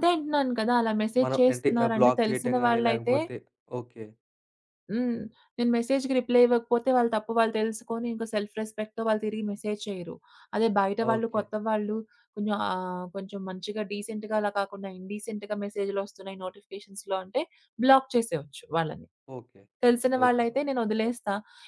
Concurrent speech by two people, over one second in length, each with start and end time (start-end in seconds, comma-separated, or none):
1.2-3.2